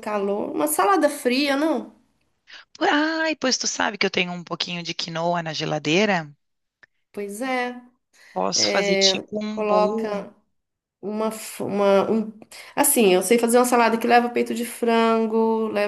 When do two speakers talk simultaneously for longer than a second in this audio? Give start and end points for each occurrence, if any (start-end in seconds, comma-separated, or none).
8.5-10.1